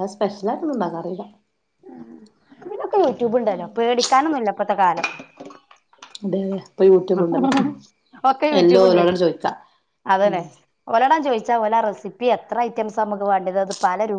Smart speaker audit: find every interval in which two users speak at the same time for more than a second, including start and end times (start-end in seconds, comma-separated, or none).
none